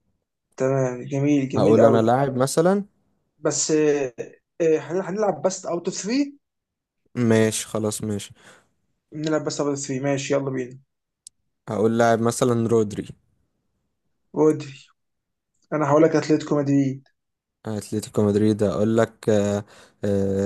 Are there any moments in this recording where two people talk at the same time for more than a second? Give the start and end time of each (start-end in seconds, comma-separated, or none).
none